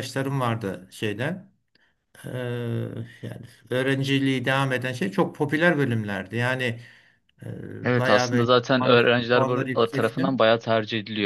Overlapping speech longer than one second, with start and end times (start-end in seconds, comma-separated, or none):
7.8-10.3